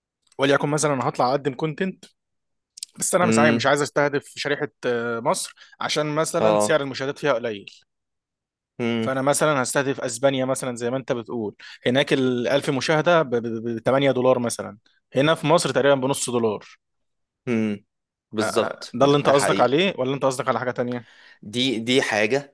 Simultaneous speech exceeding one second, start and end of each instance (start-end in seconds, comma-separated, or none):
18.4-19.8